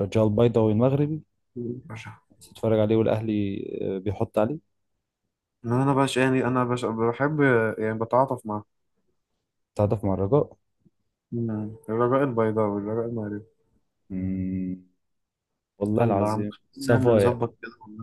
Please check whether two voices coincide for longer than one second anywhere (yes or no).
yes